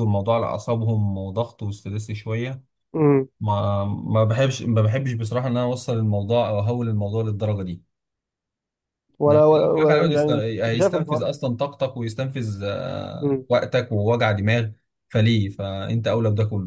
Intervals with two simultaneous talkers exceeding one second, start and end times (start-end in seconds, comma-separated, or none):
9.3-11.3